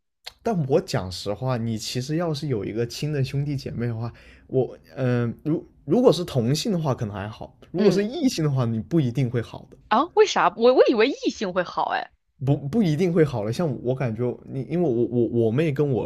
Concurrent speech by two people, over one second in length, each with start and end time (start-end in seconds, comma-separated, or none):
none